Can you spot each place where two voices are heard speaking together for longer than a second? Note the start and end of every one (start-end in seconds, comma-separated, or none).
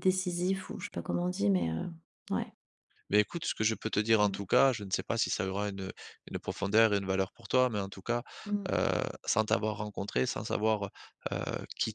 none